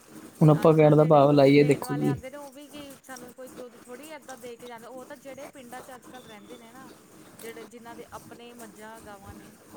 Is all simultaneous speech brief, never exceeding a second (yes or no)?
no